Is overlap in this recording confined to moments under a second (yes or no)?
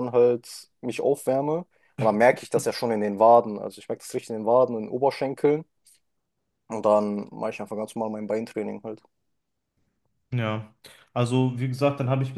yes